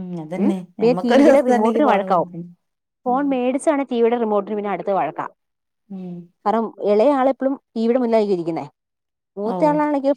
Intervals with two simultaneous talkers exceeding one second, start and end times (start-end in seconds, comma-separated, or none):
0.8-2.3